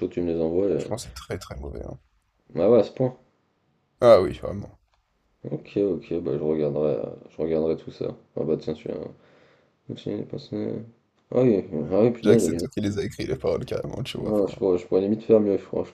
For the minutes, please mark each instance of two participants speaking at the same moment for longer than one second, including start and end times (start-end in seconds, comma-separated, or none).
none